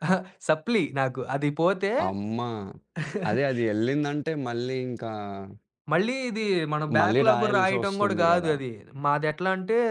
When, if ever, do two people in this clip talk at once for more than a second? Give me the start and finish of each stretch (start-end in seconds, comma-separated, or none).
7.0-8.5